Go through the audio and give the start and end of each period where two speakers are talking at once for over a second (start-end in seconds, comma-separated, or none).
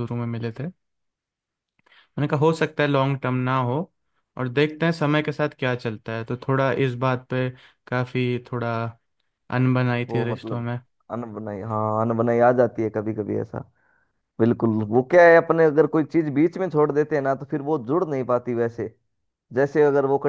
none